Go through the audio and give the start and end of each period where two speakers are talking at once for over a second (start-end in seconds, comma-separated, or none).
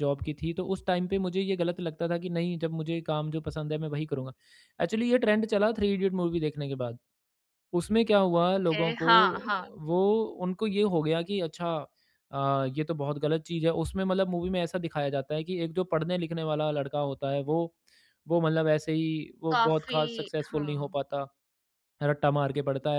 19.5-21.0